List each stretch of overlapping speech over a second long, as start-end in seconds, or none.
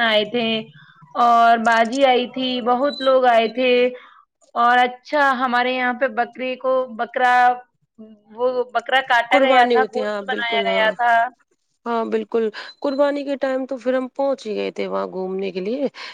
9.3-10.8